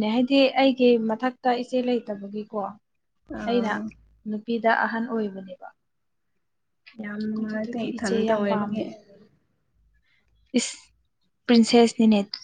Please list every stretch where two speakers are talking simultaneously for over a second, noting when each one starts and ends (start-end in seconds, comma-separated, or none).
7.4-8.8